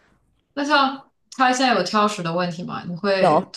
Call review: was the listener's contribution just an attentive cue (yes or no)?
yes